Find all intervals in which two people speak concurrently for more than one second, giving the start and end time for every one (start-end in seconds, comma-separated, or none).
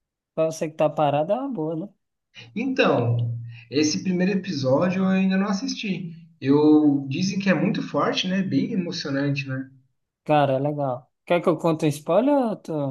none